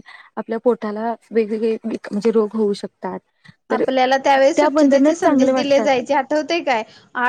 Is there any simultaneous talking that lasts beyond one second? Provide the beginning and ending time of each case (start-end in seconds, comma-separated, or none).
4.5-5.9